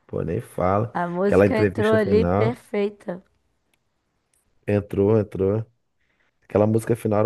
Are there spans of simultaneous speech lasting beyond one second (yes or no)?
yes